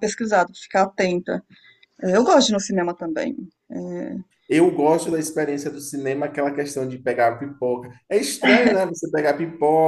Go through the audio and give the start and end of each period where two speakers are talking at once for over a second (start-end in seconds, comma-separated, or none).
none